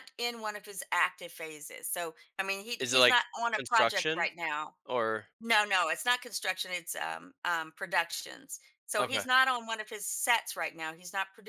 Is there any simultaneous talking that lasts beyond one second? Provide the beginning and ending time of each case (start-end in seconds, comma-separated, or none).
2.8-4.3